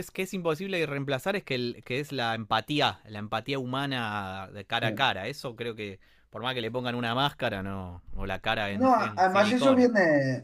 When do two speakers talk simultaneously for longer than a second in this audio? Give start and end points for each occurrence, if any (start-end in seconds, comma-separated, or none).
8.7-9.9